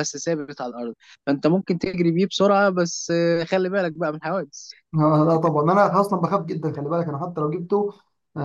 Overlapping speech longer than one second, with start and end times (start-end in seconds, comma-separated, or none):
none